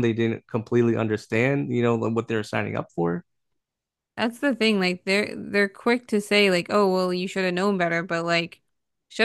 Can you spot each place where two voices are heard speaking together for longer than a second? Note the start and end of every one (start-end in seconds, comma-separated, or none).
none